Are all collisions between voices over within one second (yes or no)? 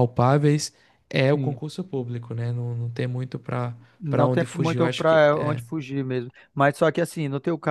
no